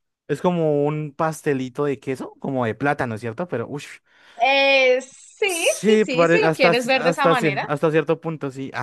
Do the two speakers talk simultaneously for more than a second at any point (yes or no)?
yes